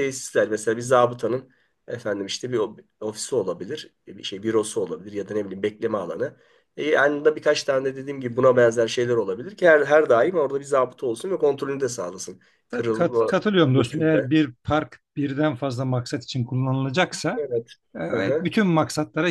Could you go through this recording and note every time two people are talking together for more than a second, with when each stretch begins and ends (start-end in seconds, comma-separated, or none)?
12.7-14.3